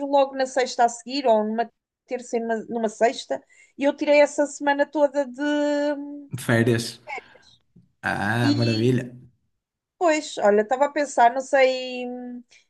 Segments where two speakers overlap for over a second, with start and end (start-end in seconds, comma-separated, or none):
none